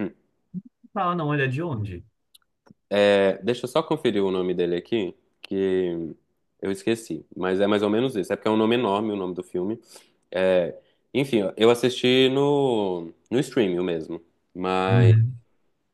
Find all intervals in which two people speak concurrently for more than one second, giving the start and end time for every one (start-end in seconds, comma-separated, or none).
none